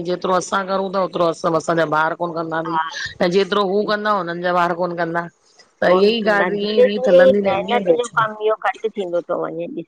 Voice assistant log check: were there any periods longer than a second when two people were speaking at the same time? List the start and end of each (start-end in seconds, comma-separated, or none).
5.8-8.4